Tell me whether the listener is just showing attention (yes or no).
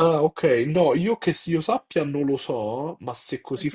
no